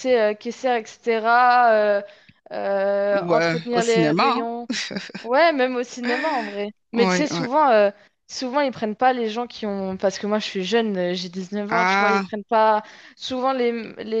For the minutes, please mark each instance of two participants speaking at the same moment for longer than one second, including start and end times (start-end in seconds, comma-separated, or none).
3.1-4.5